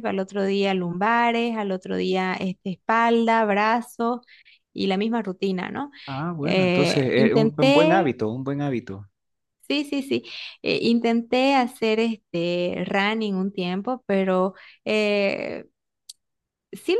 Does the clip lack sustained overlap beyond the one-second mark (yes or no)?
no